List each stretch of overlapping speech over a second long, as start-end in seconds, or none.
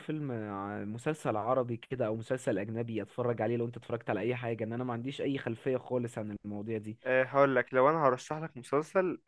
none